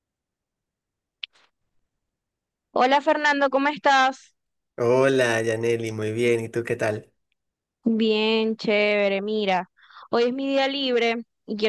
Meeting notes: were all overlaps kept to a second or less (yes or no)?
yes